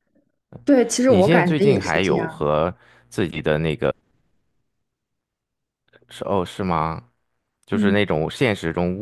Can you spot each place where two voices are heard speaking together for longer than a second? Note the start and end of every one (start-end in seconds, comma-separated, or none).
1.1-2.5